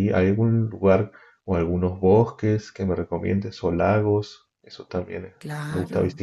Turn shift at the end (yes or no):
yes